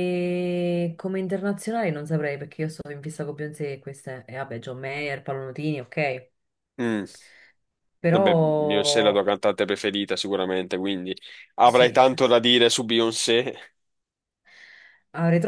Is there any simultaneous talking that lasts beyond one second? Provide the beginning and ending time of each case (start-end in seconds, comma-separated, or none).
none